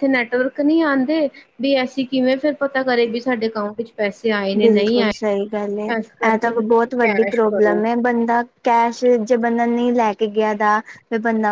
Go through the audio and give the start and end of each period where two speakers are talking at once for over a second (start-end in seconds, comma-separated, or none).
6.3-7.8